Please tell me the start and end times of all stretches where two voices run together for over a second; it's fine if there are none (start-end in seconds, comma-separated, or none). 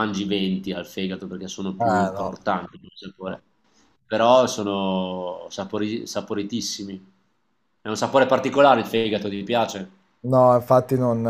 none